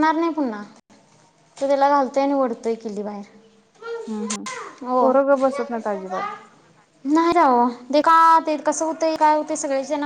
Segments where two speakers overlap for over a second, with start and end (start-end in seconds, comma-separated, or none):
none